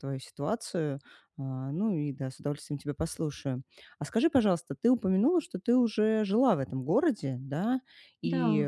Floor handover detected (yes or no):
no